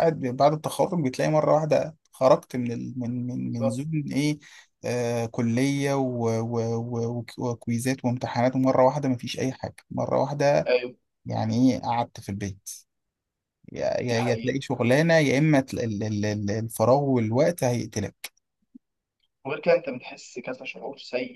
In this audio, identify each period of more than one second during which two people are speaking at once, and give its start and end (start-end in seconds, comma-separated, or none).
none